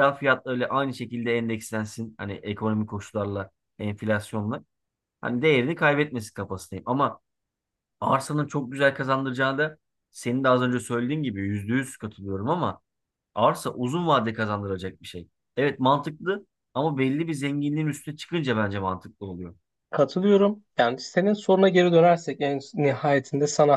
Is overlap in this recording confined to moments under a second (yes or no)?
yes